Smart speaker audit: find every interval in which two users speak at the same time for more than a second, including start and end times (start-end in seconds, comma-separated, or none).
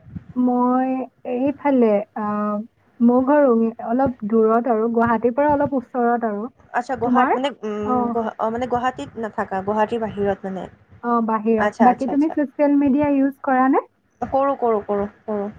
none